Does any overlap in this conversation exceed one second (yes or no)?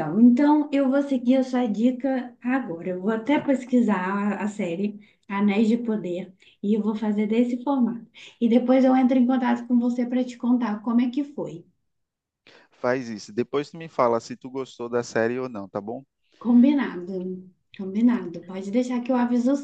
no